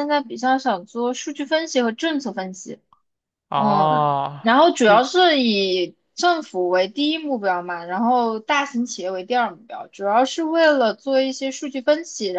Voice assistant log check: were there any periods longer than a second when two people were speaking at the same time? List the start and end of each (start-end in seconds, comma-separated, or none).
3.5-5.1